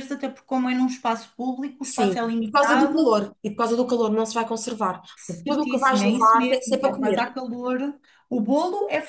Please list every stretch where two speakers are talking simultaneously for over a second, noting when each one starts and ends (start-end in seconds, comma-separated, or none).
1.8-3.1, 5.5-7.2